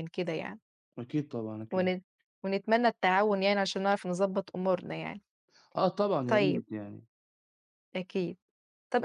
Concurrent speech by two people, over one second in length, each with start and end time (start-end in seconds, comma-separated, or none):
none